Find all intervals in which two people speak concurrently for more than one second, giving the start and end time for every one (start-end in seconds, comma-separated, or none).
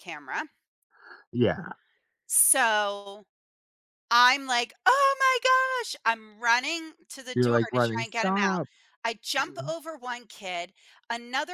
7.3-8.6